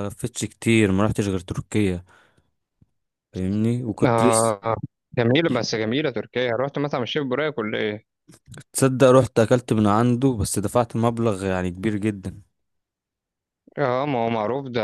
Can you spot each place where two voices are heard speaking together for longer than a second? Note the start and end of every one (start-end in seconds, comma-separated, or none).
none